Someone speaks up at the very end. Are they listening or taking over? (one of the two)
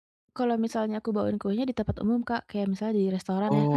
listening